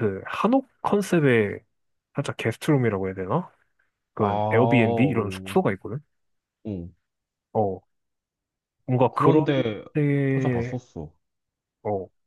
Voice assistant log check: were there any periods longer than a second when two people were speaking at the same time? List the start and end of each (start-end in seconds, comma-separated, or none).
4.2-5.6